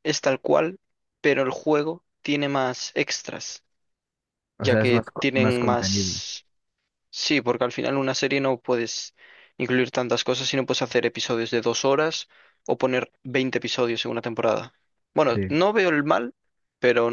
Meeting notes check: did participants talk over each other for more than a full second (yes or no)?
yes